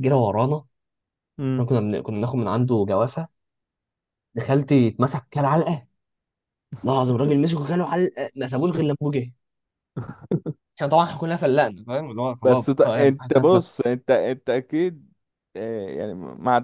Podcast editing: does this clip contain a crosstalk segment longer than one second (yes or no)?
yes